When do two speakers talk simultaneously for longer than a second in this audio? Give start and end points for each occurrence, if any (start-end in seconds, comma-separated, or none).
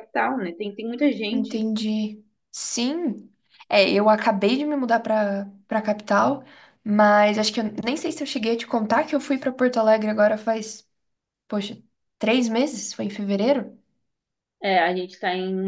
none